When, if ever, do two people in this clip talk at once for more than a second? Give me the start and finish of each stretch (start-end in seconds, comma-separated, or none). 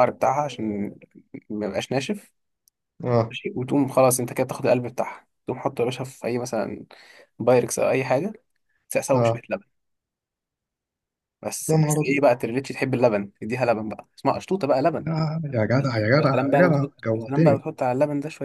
16.2-17.6